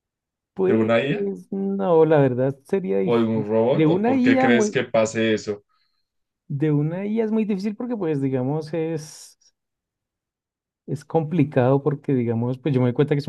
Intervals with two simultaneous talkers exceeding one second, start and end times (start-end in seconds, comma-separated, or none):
3.0-4.8